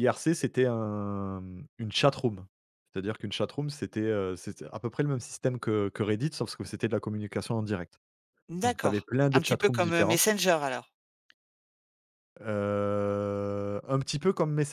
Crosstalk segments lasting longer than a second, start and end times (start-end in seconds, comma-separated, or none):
8.6-10.3